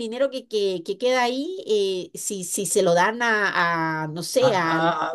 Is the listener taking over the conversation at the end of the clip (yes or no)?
yes